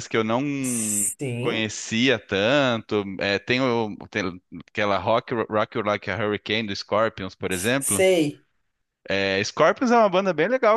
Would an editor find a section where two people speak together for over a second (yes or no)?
no